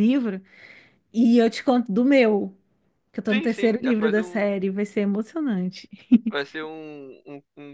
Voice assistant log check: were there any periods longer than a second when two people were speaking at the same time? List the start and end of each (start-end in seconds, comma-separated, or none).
3.3-4.5